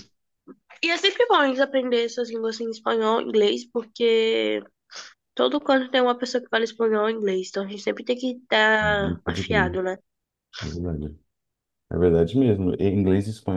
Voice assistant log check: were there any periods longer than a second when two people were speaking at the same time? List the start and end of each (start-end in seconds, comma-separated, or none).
none